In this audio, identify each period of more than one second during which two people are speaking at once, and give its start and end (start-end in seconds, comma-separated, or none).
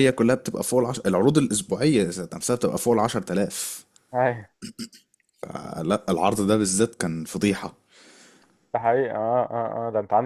none